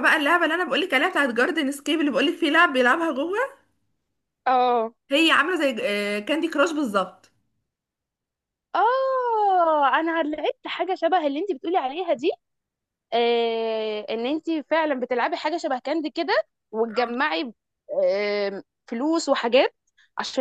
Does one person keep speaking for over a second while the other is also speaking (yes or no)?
no